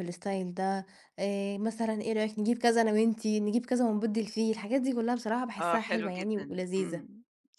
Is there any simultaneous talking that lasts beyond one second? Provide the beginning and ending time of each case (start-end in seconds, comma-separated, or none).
5.6-7.0